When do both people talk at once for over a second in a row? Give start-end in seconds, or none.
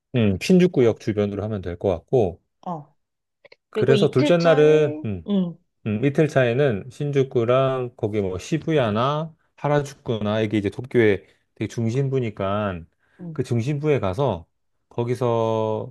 3.7-5.3